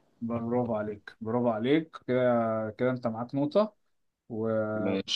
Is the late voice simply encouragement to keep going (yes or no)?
yes